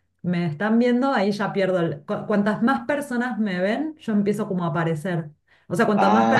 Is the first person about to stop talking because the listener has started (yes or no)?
no